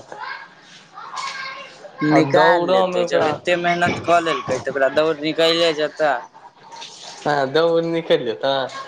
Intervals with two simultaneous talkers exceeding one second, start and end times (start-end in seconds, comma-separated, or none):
2.1-3.6